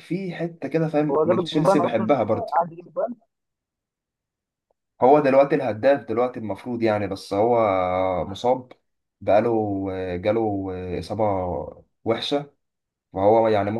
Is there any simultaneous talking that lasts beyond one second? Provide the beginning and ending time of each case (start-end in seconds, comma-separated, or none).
1.1-2.6